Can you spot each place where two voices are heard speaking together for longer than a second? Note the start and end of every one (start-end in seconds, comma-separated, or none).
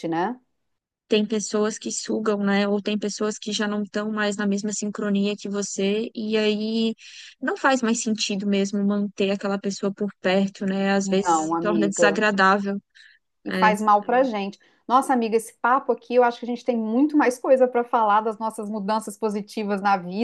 11.0-12.2